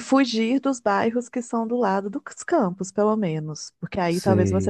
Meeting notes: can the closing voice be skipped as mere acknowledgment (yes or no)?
yes